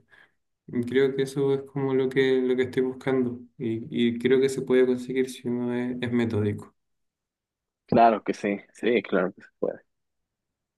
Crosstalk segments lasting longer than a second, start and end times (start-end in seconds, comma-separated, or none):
none